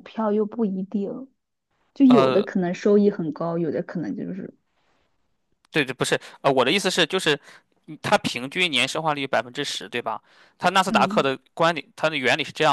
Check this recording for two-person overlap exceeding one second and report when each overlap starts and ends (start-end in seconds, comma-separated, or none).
none